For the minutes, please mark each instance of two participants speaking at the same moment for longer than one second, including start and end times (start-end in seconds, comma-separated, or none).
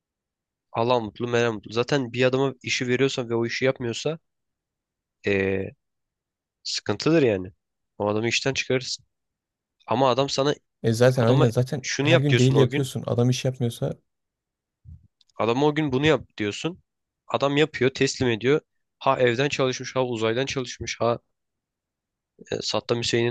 11.2-12.9